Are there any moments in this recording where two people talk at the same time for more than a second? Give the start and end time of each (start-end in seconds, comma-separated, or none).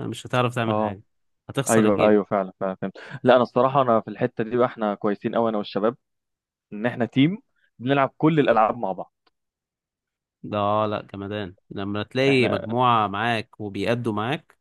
none